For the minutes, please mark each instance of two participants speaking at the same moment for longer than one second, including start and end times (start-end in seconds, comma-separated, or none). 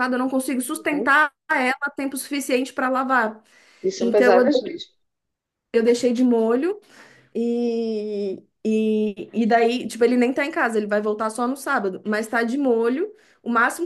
none